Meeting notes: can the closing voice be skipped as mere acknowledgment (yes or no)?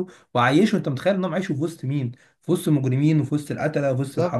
no